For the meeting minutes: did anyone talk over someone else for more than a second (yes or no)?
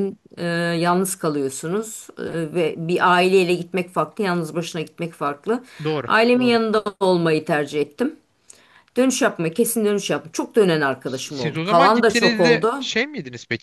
yes